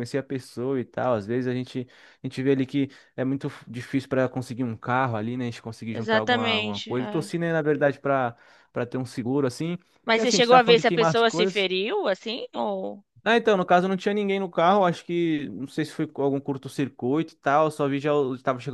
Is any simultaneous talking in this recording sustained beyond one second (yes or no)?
yes